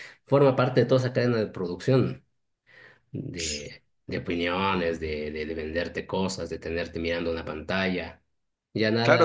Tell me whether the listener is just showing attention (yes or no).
no